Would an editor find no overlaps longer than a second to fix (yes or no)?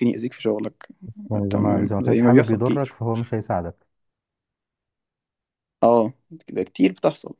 no